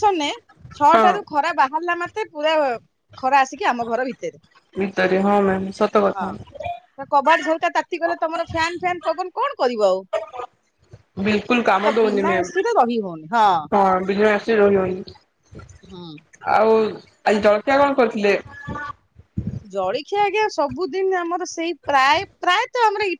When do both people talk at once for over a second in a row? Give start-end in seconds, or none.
11.8-13.5